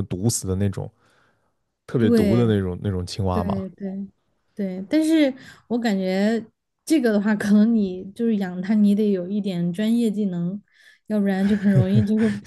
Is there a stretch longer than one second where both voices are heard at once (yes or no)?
no